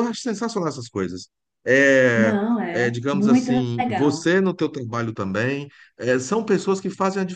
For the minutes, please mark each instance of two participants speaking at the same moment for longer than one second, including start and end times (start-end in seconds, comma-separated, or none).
2.1-4.3